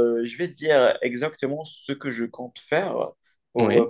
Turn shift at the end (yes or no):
no